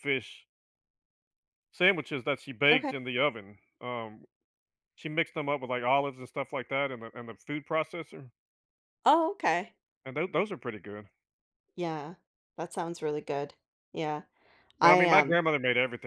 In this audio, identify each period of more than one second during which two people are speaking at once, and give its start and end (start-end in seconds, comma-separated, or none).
none